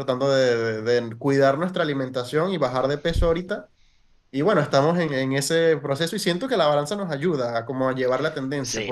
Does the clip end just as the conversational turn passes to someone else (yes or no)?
yes